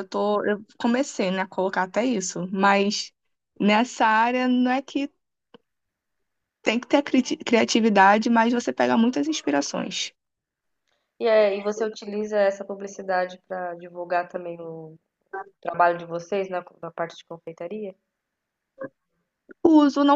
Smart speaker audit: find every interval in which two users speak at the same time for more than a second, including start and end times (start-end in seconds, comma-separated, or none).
none